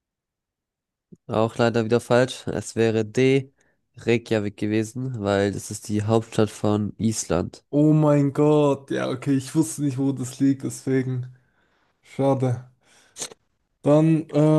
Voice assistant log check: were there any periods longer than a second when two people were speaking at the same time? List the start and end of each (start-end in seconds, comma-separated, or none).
none